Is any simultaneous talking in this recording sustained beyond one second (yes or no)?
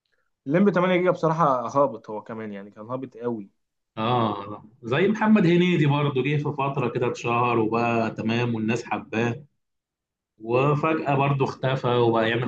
no